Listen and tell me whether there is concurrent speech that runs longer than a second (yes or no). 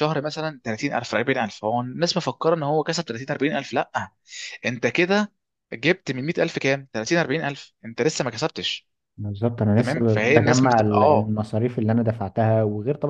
yes